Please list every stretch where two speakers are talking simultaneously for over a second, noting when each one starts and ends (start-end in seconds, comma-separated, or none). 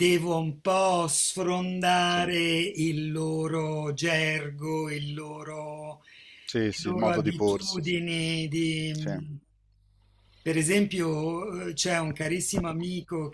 6.7-8.0